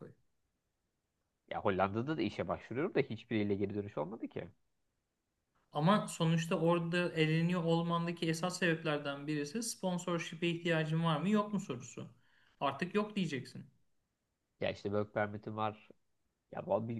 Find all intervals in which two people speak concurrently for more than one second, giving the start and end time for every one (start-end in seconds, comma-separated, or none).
none